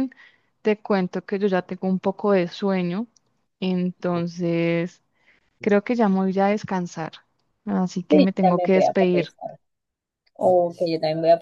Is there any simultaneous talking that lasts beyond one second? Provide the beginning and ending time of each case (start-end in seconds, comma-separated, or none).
8.1-9.3